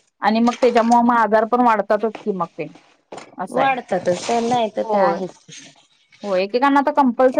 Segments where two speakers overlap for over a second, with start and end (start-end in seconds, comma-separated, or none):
none